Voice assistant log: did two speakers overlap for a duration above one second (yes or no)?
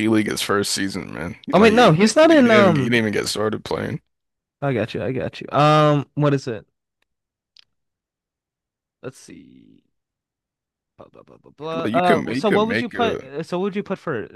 yes